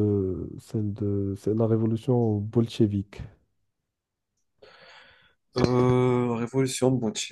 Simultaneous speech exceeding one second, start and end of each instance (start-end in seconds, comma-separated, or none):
none